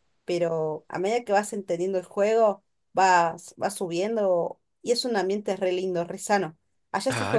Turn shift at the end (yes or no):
yes